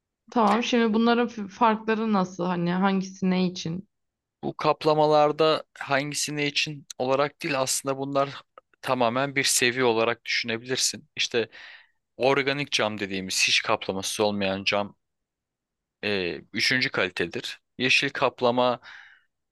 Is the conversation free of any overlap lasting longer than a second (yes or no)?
yes